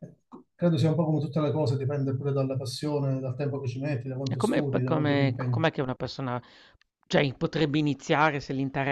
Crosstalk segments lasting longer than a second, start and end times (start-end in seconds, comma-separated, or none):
4.3-5.6